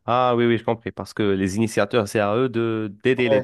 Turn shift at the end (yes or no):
yes